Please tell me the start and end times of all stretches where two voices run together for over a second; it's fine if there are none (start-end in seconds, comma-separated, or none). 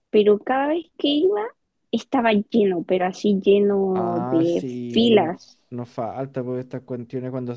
3.9-5.6